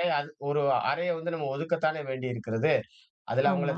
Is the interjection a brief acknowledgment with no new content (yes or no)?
yes